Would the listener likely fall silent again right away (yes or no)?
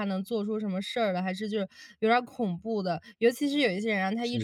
yes